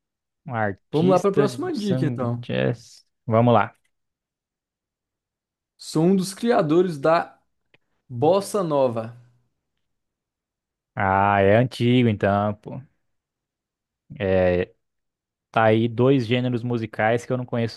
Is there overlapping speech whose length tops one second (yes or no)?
yes